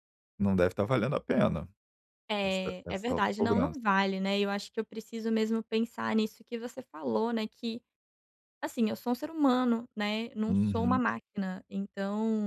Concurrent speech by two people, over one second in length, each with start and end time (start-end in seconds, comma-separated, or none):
2.4-3.8